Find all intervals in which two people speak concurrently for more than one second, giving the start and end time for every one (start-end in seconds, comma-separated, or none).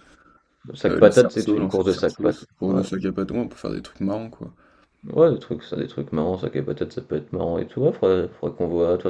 0.9-2.8